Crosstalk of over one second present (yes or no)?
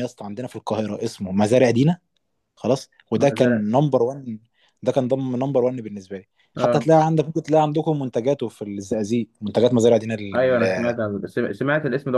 no